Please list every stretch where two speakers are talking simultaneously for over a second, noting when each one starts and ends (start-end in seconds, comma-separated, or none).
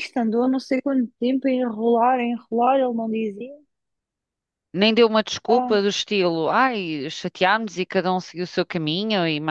none